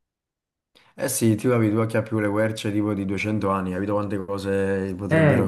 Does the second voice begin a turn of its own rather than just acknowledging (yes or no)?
yes